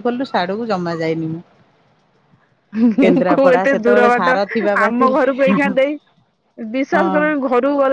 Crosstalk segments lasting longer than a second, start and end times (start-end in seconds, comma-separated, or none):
3.0-5.2